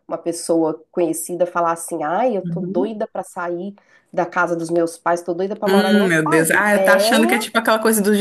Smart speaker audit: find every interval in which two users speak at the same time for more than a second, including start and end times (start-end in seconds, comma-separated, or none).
5.7-7.6